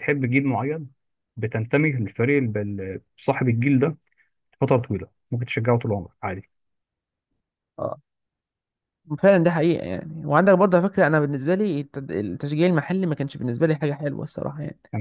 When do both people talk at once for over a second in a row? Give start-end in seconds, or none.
none